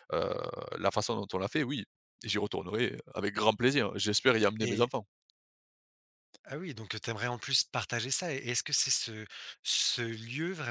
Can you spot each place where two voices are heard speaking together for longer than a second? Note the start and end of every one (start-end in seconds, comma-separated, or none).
none